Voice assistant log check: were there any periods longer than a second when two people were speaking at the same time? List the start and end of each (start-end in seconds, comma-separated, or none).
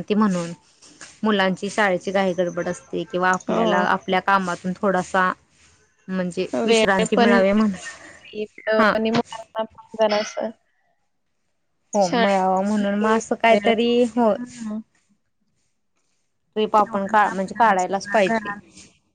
16.8-18.5